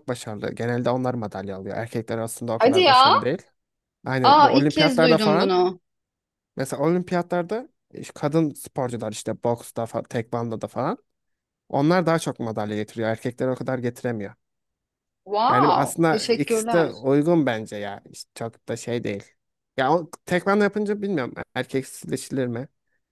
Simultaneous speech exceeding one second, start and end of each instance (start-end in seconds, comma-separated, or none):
4.3-5.5, 15.5-16.9